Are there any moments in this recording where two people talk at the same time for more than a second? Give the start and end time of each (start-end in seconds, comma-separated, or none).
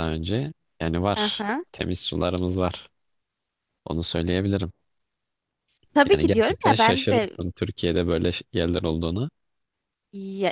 6.1-7.4